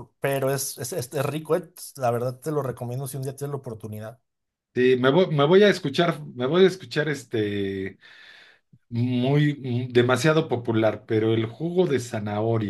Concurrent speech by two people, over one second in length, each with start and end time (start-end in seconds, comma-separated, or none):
none